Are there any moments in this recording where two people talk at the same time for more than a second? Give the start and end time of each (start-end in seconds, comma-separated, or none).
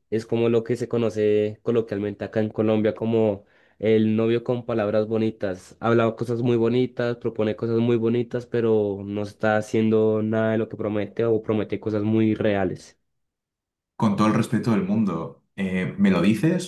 none